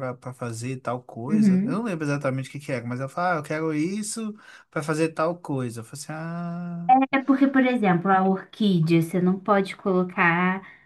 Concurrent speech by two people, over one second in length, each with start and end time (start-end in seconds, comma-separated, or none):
none